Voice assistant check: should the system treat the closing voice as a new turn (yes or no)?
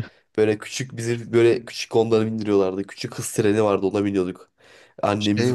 no